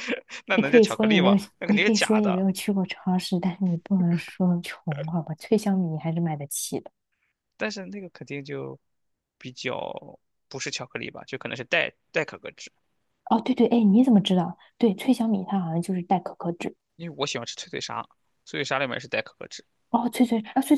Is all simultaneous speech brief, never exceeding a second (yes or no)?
no